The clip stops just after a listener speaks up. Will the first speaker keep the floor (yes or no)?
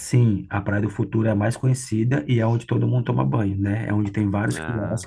yes